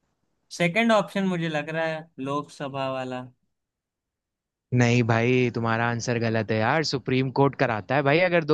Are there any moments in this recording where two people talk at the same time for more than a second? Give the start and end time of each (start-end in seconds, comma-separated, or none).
none